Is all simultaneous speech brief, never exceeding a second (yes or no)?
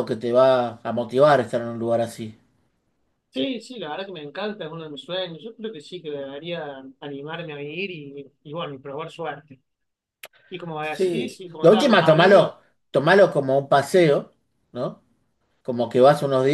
no